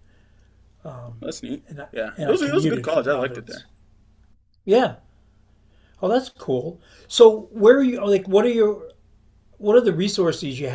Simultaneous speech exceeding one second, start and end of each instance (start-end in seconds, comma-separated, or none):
1.7-3.6